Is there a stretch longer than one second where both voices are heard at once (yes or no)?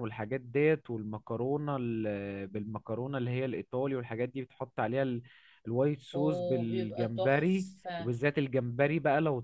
yes